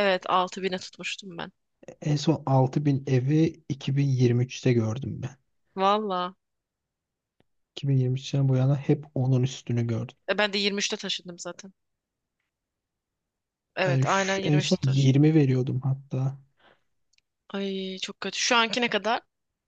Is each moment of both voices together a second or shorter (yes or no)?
no